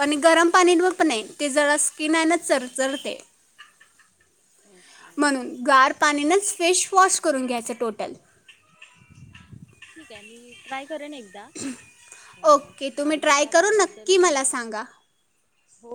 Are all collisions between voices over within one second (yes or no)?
no